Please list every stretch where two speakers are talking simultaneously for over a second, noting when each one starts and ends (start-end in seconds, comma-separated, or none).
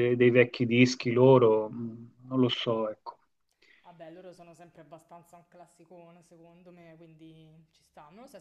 none